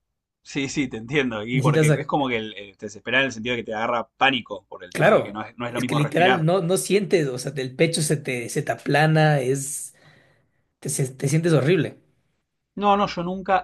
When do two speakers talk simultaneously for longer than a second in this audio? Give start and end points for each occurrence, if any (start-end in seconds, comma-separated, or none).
4.9-6.5